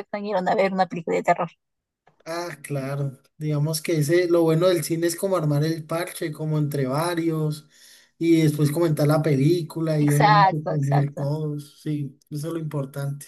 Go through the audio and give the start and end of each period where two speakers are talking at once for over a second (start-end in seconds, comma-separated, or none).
10.0-11.2